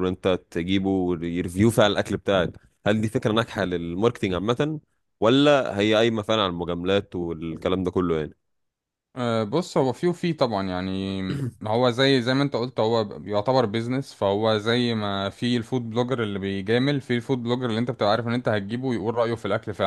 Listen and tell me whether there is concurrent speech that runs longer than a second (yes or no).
no